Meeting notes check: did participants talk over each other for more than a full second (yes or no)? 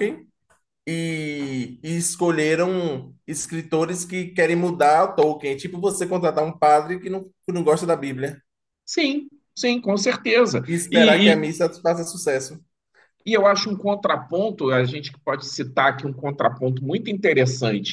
no